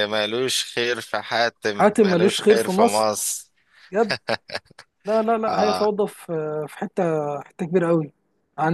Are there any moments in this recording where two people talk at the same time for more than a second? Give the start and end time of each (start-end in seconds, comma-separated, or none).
1.7-3.1